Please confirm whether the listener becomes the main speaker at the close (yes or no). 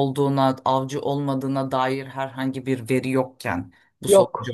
no